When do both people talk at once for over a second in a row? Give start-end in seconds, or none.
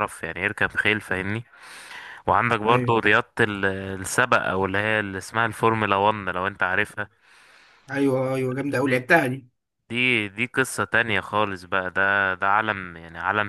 none